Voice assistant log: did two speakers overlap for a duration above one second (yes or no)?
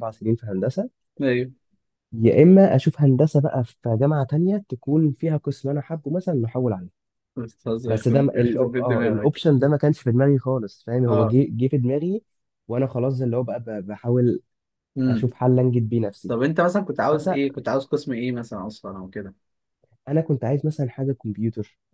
yes